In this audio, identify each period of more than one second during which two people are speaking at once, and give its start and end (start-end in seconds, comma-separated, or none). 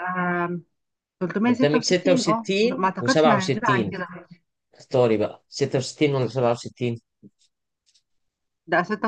1.5-3.9